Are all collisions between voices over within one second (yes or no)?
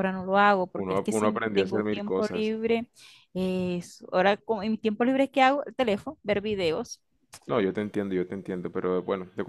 no